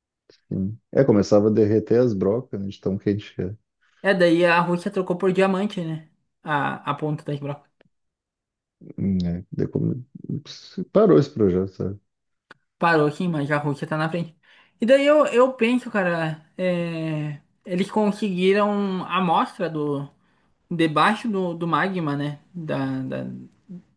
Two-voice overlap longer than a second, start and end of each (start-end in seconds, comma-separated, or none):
none